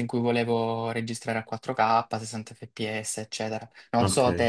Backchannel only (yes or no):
yes